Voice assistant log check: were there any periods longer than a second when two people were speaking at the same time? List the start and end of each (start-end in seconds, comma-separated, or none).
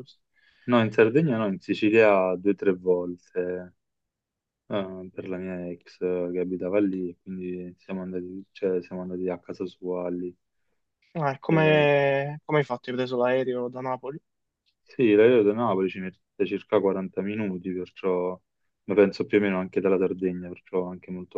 none